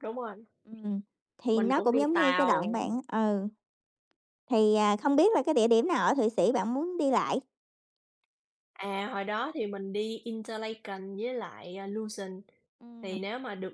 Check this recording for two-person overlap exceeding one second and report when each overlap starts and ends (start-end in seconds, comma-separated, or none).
1.5-2.8